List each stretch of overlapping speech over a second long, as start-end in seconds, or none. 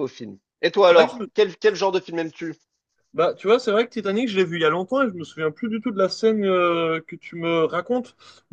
none